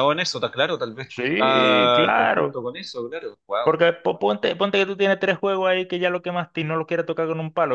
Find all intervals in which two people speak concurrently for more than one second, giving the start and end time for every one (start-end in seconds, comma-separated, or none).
1.1-2.6